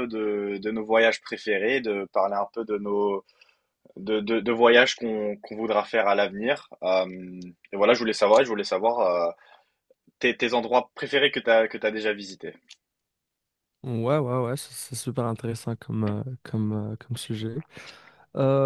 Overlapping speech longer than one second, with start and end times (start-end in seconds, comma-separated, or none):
none